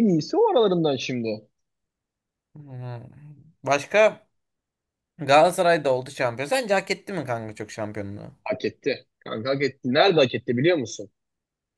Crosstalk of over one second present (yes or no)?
no